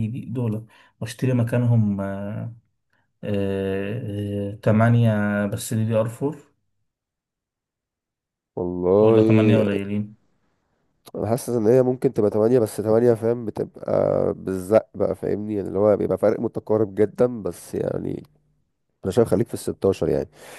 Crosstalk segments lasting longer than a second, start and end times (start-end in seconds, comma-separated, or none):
none